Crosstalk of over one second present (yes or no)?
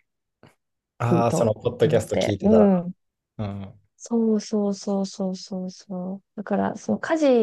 yes